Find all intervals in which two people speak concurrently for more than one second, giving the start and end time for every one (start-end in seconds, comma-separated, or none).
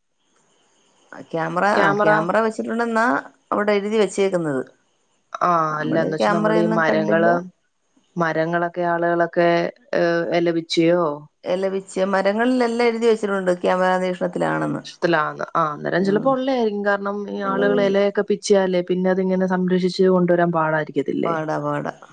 5.7-7.3